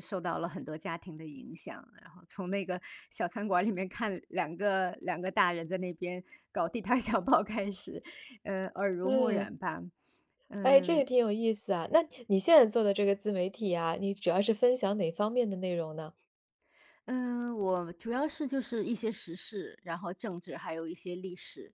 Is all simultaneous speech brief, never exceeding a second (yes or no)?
yes